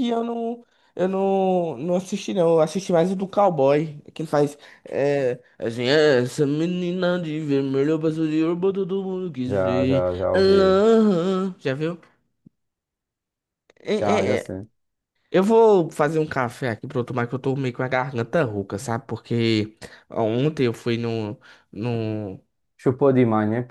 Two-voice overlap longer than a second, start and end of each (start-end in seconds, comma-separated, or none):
9.5-10.8